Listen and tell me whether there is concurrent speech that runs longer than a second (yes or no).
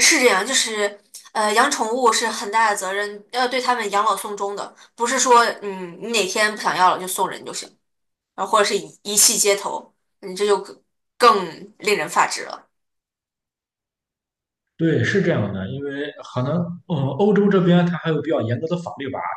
no